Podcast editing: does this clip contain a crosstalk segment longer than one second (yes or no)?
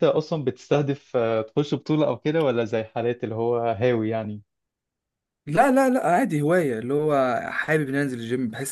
no